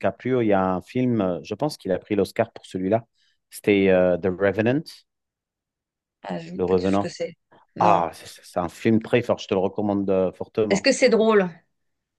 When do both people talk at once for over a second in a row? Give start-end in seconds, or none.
none